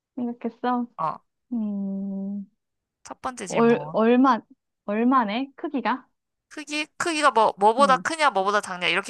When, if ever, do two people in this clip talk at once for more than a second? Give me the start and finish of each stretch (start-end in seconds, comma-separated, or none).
none